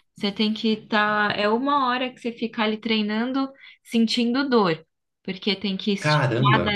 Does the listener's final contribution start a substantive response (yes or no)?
no